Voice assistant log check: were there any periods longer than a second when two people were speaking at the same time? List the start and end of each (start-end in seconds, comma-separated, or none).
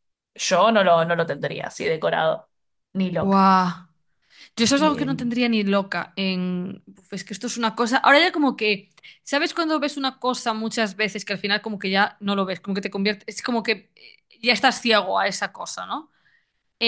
none